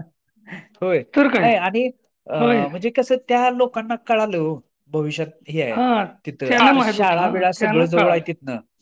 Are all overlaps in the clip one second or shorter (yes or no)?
no